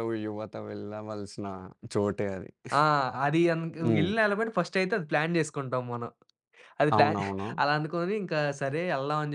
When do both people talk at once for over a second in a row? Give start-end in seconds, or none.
none